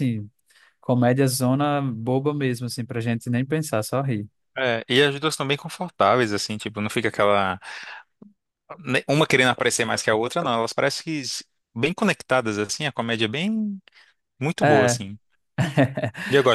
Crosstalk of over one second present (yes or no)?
no